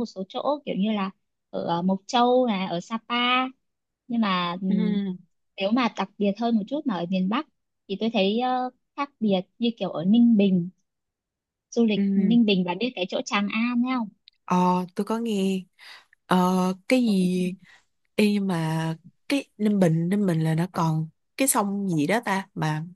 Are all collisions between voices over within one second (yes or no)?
yes